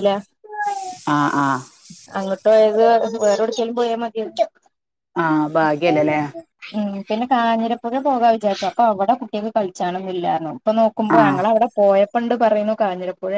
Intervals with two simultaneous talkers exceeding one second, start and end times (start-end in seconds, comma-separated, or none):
none